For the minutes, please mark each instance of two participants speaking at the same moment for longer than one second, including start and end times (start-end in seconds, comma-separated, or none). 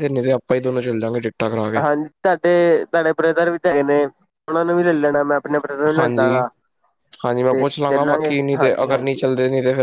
none